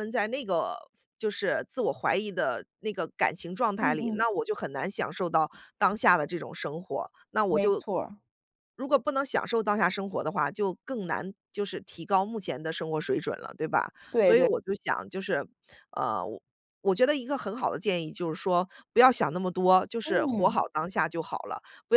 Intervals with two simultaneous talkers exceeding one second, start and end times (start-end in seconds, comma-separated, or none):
none